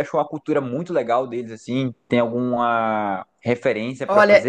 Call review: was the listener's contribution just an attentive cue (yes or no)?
no